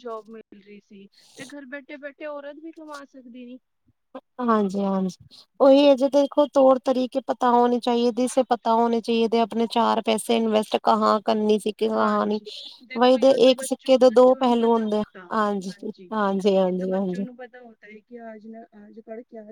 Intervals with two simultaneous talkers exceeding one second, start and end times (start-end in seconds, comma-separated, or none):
none